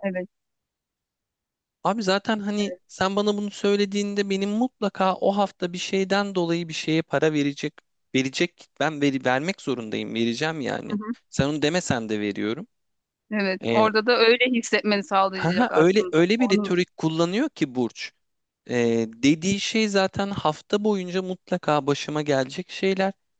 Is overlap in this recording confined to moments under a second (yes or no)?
no